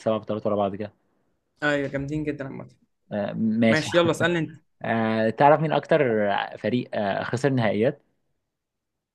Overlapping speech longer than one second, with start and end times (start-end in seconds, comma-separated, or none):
none